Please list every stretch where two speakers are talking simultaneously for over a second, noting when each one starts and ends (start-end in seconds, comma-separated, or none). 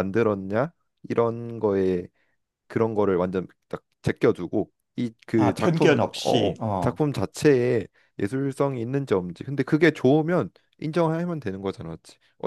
5.3-7.0